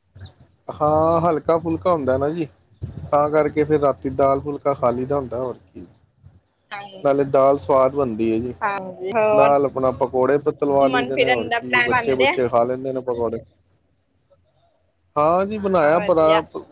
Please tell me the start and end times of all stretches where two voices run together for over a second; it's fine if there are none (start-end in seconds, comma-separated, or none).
10.7-12.3